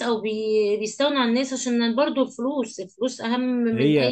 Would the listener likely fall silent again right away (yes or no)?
no